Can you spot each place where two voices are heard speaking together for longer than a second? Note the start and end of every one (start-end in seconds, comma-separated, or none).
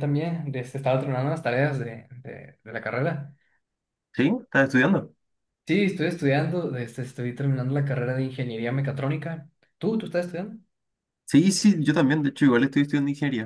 none